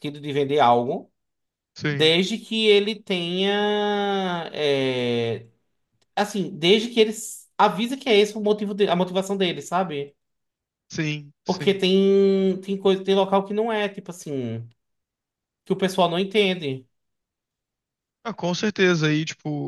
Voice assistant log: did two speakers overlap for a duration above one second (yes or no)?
no